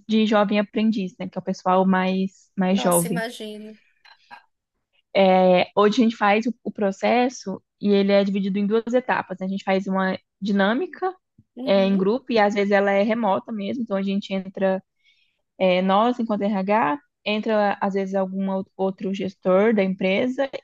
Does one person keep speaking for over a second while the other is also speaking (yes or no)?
no